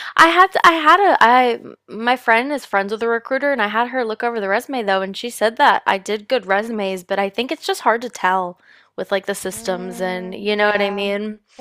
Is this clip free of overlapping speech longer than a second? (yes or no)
no